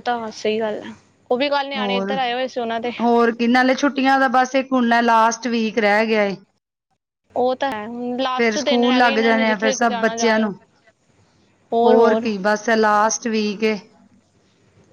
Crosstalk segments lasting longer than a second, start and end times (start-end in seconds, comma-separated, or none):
8.4-10.5